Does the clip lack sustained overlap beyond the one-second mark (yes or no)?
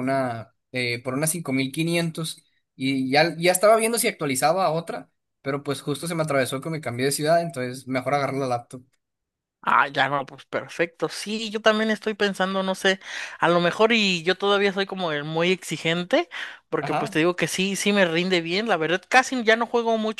yes